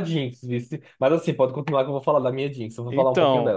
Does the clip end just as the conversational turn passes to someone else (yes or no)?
yes